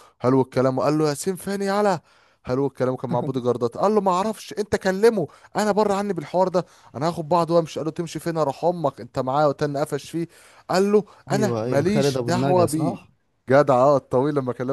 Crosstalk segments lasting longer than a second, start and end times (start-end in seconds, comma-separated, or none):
11.3-13.0